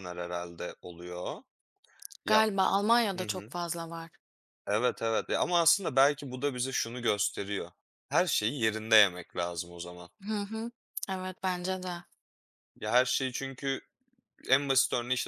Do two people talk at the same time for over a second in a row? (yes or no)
no